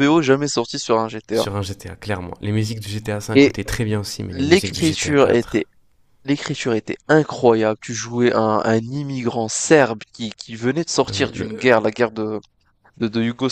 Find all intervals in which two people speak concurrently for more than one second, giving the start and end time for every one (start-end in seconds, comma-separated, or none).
4.3-5.7